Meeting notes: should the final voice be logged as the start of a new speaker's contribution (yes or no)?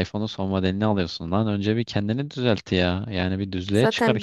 yes